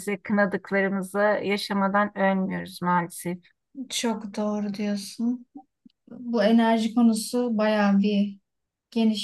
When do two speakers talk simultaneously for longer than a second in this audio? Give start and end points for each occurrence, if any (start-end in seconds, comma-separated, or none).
none